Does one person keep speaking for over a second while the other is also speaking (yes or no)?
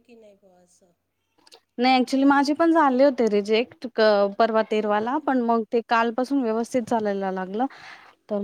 no